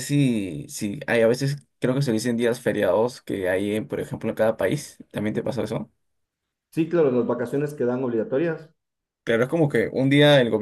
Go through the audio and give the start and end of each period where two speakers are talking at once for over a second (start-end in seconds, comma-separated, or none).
none